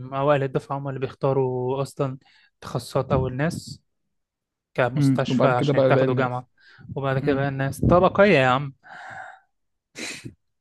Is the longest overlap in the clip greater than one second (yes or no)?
yes